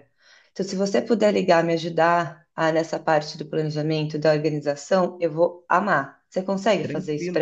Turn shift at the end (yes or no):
yes